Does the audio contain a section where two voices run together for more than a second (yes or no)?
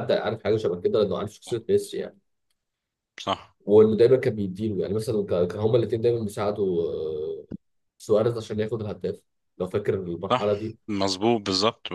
no